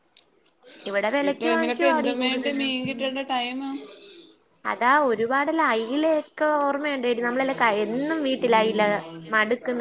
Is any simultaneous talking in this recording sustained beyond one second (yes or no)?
yes